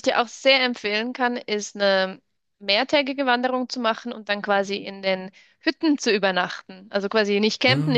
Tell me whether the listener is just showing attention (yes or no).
yes